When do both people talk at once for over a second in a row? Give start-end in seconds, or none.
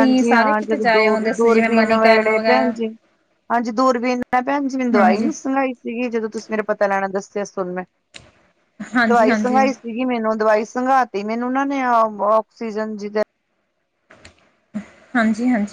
1.4-2.7